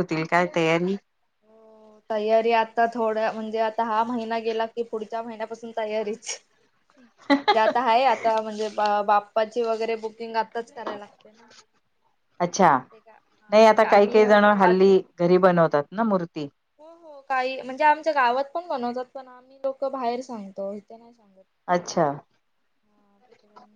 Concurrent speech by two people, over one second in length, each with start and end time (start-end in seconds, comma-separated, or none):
13.5-14.9